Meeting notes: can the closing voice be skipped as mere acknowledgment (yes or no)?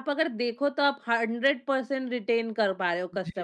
no